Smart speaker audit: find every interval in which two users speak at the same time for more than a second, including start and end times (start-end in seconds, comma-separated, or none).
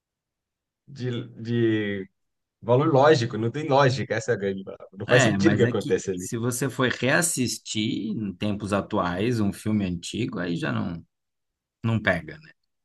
5.1-6.3